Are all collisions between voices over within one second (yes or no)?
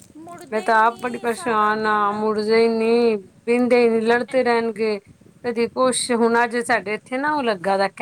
no